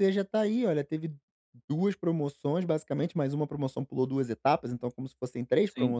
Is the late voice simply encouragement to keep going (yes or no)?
yes